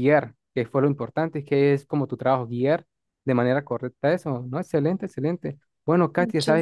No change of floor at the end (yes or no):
yes